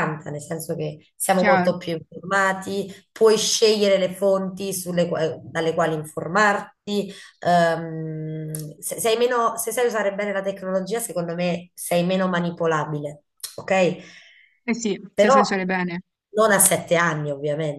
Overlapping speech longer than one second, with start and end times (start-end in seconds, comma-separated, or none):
none